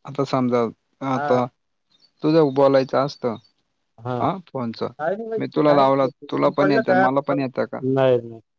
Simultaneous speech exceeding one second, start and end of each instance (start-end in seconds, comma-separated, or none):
5.7-7.8